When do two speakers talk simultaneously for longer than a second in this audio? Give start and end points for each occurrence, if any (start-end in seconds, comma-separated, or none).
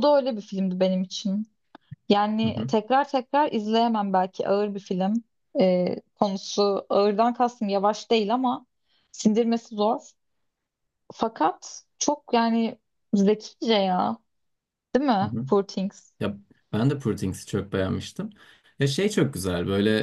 none